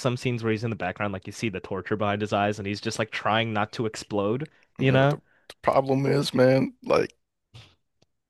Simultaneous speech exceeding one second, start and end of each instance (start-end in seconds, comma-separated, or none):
none